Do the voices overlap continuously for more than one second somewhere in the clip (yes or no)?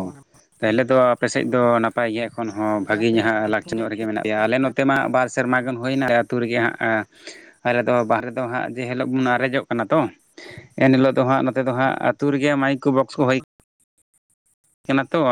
yes